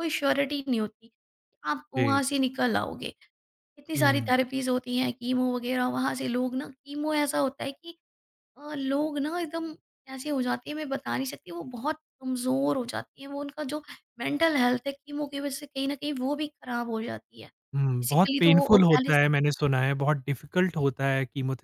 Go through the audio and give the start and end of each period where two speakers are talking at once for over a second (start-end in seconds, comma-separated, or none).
17.8-19.2